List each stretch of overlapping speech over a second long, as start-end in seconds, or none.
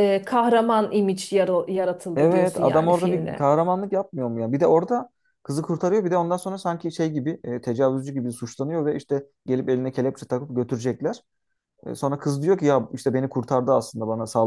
2.1-3.5